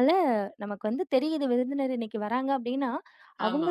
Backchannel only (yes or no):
yes